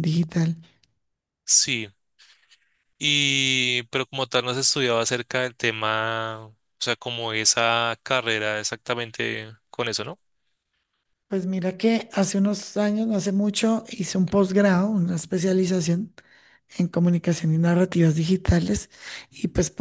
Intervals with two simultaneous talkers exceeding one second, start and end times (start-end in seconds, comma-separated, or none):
none